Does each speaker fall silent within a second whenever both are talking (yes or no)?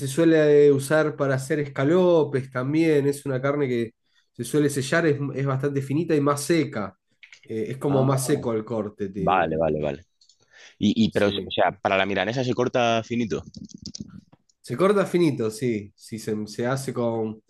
yes